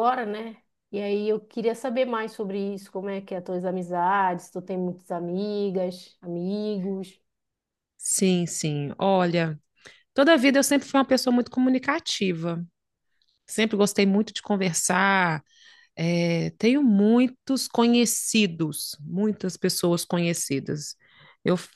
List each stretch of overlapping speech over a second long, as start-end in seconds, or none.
none